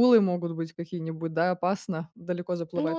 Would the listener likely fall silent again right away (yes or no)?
no